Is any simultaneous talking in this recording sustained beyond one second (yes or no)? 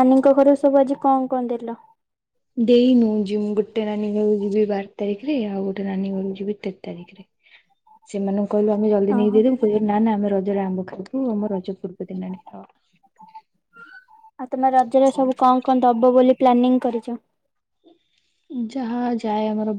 no